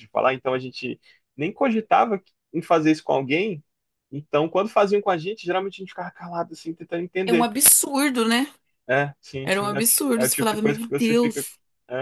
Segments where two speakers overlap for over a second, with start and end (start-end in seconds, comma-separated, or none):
9.4-11.5